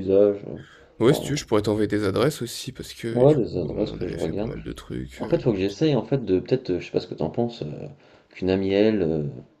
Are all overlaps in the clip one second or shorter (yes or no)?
no